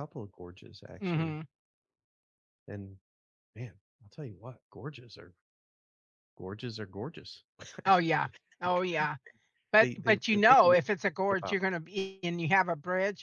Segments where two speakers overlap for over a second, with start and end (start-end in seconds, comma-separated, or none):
9.8-11.6